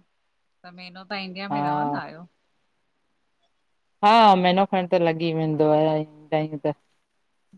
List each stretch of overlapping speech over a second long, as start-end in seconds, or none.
none